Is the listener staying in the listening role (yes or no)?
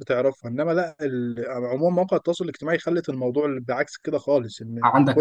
no